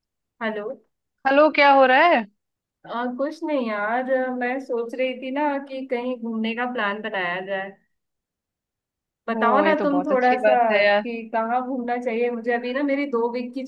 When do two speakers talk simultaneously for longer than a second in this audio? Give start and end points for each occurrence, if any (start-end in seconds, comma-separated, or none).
9.3-11.0